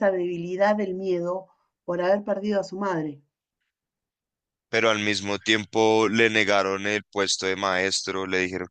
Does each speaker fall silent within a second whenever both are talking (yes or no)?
yes